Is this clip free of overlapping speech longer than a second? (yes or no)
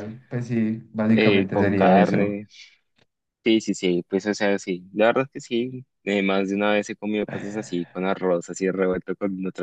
no